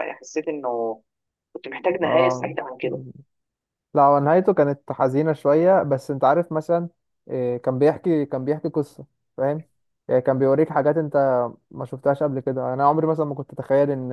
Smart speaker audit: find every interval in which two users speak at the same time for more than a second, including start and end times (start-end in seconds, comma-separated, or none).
none